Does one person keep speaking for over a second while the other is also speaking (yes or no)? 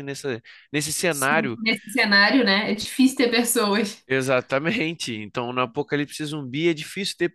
no